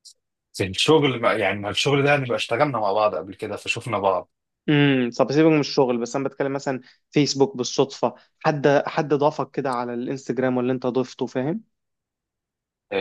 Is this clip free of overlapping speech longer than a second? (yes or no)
yes